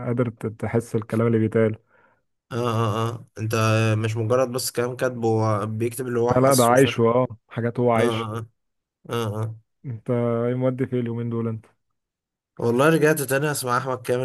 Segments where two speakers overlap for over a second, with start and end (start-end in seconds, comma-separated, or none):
none